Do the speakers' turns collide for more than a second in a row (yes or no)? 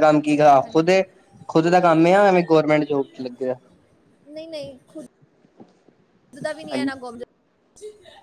no